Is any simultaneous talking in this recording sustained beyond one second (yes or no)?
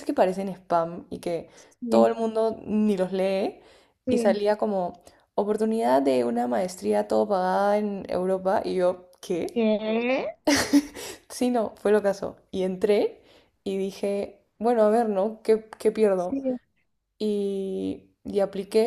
no